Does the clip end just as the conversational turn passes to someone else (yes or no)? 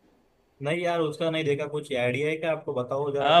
yes